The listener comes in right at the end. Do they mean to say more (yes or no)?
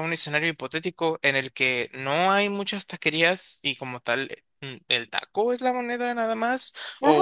yes